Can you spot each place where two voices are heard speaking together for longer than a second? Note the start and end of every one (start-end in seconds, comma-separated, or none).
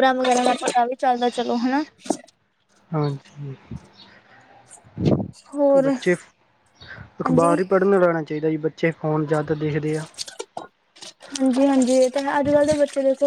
none